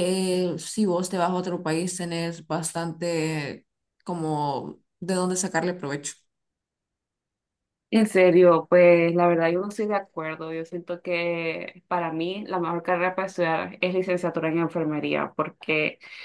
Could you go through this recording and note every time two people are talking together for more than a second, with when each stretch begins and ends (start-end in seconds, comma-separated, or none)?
none